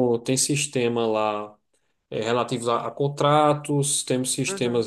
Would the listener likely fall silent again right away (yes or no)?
yes